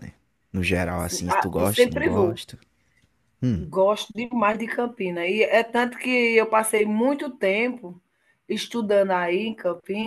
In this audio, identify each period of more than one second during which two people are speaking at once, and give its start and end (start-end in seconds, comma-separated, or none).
1.0-2.4